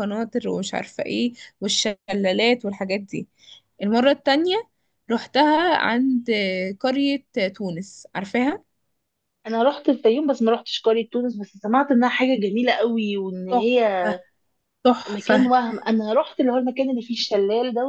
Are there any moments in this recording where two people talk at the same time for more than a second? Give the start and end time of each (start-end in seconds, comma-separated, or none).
none